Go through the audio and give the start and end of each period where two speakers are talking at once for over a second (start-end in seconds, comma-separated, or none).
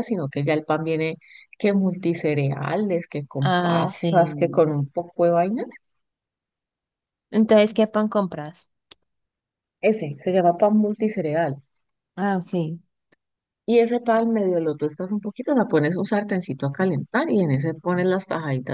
3.4-4.6